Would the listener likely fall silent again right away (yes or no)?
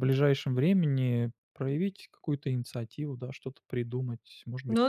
no